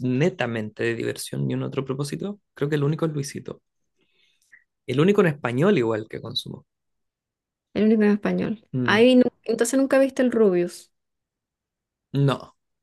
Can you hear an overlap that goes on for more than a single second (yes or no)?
no